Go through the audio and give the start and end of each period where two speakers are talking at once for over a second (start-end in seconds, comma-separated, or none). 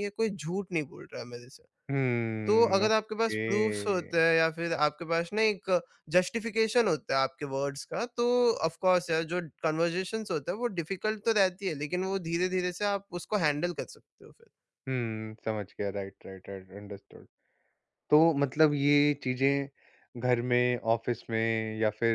2.5-4.2